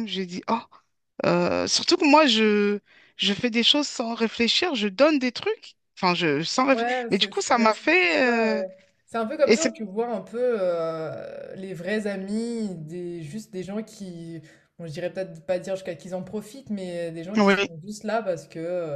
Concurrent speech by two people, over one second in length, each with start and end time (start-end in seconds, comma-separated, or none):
6.7-8.6